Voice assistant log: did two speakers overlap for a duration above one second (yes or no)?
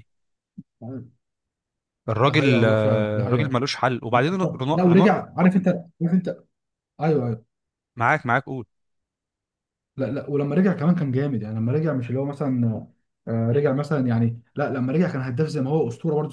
yes